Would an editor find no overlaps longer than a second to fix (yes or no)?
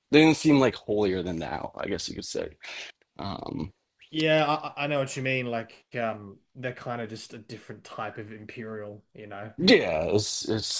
yes